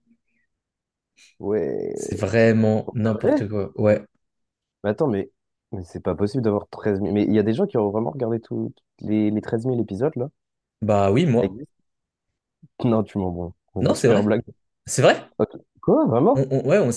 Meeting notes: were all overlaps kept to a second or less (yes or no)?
yes